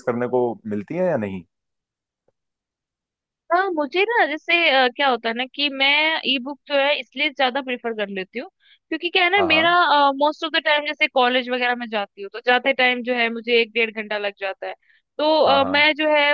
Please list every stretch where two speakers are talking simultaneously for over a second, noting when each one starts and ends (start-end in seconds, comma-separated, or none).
none